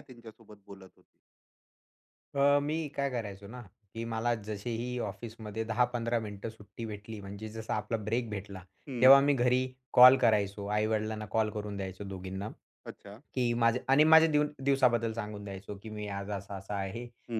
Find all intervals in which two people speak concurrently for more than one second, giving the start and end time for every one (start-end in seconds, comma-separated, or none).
none